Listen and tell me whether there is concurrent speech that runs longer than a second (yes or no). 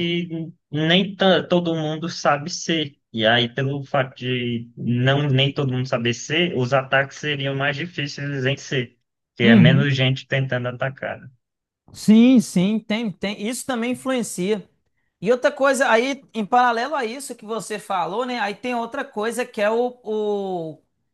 no